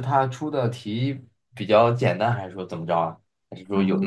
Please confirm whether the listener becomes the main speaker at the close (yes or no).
yes